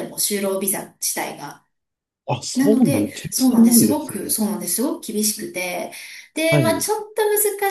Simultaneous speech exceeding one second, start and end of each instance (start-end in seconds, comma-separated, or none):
2.5-4.4